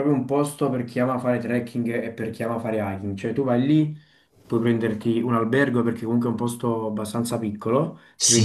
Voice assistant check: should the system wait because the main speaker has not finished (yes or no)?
yes